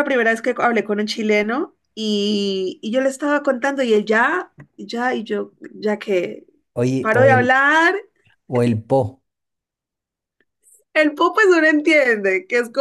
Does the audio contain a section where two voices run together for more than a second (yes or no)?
no